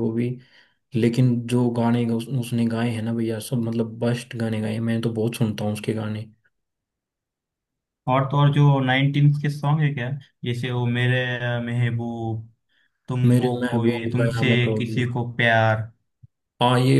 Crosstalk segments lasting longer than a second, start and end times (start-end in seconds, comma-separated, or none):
13.3-15.0